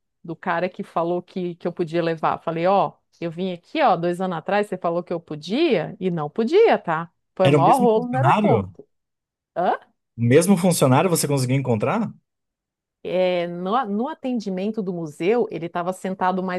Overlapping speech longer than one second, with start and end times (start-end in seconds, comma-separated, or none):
7.4-8.7